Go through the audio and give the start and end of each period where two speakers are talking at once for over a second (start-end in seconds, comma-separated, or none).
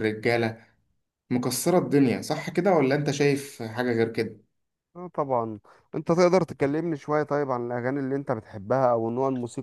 none